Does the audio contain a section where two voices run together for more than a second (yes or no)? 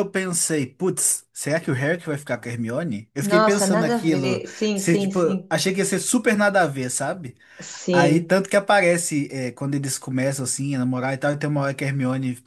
yes